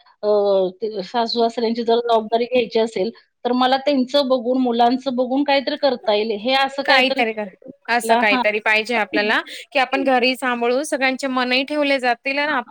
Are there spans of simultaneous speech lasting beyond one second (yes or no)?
yes